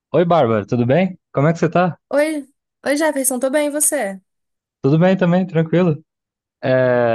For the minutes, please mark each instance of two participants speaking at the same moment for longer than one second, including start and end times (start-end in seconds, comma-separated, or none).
none